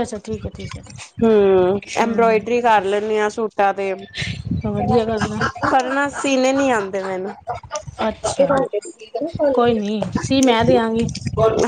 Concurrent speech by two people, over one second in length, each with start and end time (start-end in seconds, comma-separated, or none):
none